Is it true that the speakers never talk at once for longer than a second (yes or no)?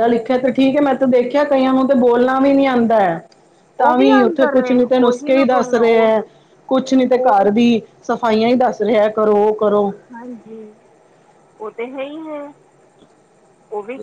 no